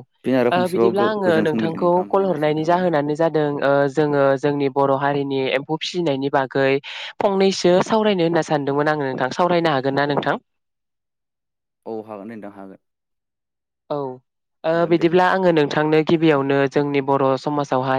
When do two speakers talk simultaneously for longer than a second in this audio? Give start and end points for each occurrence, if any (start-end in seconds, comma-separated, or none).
0.7-2.8